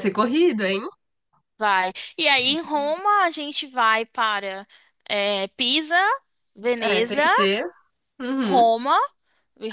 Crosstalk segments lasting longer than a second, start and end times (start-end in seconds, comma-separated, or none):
none